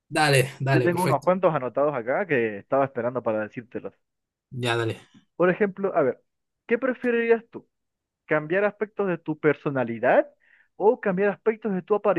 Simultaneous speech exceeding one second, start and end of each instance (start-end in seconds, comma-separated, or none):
none